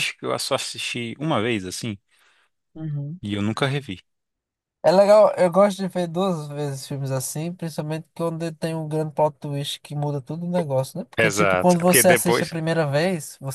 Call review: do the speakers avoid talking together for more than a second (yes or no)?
no